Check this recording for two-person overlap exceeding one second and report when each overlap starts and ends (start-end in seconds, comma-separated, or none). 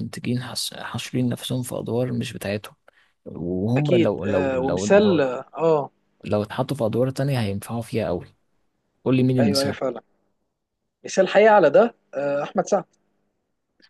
3.8-5.2